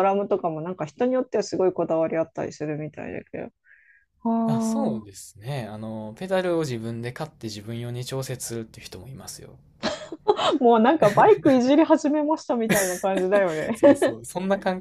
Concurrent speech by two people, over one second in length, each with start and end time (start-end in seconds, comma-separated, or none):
none